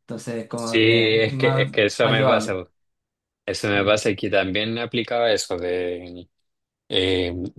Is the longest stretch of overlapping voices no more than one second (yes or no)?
no